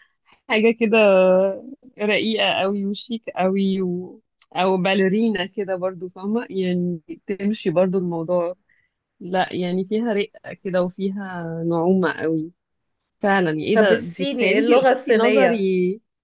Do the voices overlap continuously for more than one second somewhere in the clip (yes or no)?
yes